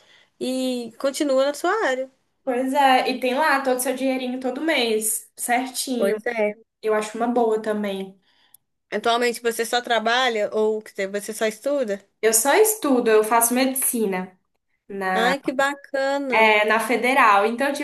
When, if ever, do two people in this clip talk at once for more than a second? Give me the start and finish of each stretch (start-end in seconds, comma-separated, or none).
none